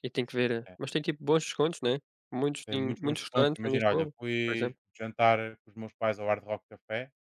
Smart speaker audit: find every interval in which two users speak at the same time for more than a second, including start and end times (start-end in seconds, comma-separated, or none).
2.7-4.8